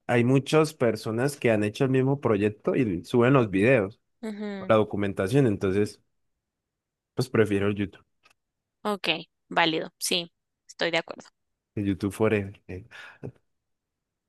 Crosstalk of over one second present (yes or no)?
no